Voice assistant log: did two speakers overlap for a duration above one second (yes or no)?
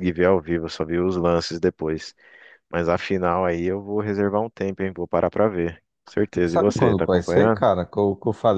yes